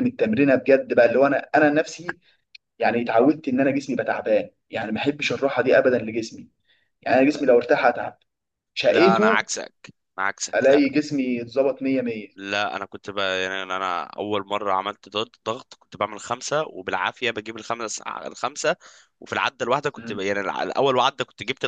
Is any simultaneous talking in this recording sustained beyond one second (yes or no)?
no